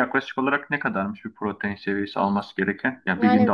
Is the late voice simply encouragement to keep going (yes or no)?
yes